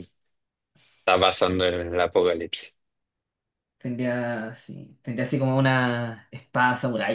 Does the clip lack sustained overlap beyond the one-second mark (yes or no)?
yes